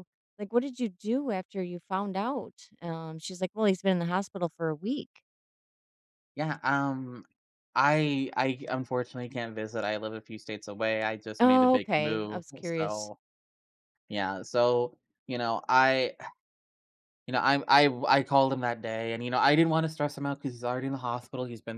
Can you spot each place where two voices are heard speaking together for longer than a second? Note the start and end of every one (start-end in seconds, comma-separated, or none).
11.4-13.1